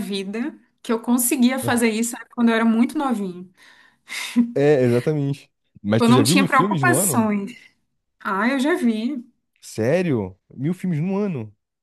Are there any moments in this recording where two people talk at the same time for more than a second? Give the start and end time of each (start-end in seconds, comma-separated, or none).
6.0-7.3